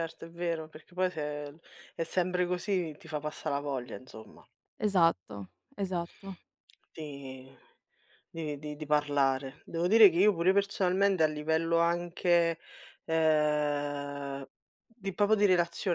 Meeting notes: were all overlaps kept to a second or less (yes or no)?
yes